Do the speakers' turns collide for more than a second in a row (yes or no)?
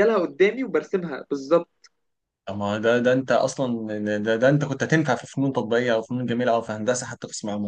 no